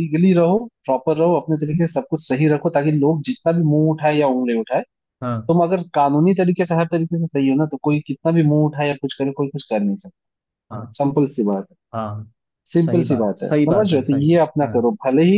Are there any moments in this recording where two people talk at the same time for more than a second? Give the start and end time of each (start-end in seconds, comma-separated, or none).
12.7-14.8